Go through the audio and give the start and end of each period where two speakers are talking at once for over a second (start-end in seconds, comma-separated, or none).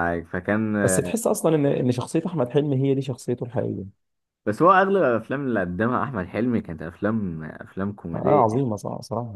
none